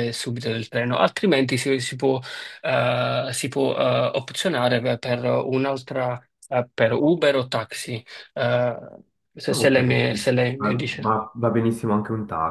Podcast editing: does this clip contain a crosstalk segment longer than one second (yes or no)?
yes